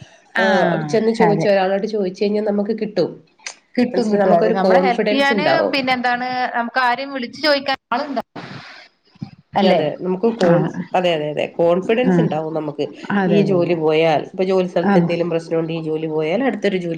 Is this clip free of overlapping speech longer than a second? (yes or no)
no